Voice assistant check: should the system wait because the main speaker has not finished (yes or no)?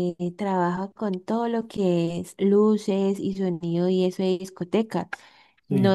yes